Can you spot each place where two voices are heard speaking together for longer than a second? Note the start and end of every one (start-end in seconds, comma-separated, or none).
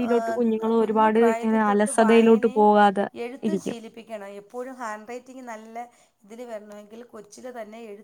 0.8-2.5